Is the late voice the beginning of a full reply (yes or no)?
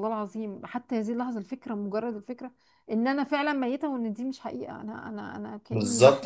yes